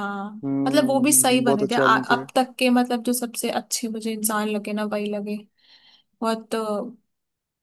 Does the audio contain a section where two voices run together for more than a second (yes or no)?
yes